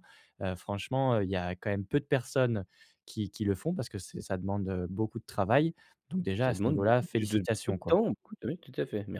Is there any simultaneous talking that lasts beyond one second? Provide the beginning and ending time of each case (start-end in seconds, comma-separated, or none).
6.4-8.0